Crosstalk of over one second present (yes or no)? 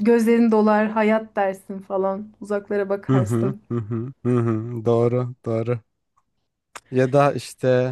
no